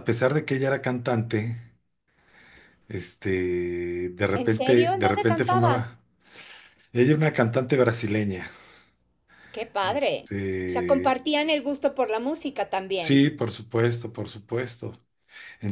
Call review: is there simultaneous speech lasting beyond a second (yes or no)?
yes